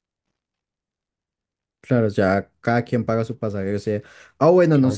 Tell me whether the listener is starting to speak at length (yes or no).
no